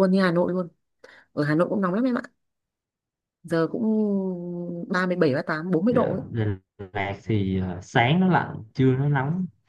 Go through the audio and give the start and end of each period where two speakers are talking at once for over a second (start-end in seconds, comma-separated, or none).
none